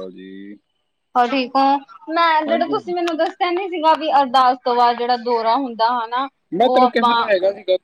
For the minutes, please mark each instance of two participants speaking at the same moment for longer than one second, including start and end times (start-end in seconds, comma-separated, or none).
none